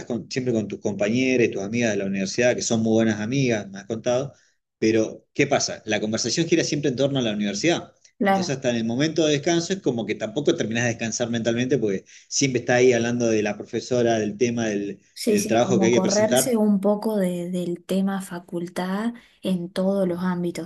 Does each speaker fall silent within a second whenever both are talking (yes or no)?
no